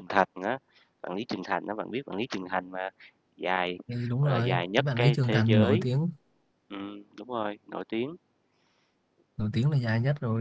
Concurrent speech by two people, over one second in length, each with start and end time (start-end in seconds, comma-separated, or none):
4.2-5.9